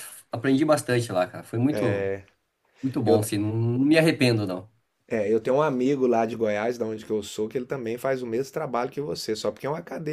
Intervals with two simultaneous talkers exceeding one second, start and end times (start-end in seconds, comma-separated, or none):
none